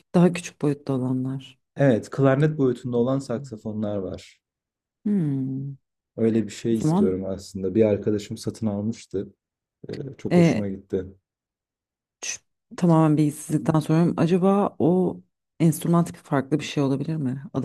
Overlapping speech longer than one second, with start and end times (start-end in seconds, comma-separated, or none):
none